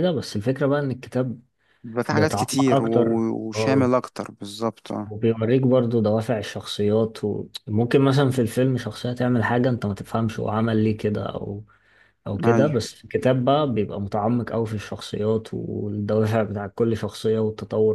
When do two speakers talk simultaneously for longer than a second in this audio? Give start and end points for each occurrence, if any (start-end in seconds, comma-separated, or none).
2.1-3.9